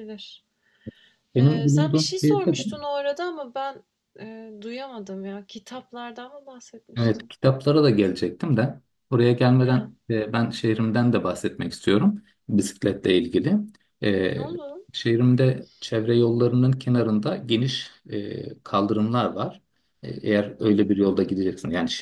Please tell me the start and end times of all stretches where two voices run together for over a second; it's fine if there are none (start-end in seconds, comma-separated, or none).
1.4-2.6